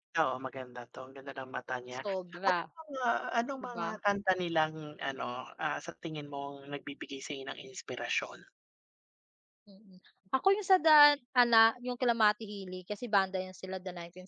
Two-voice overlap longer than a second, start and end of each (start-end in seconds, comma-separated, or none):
none